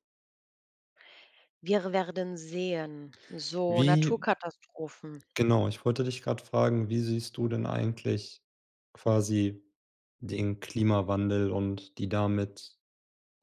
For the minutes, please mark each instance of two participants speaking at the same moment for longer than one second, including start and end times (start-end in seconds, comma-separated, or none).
none